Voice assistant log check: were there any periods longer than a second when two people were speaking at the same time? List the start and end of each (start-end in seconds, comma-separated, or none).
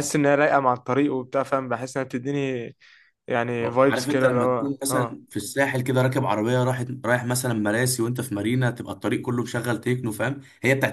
3.6-5.2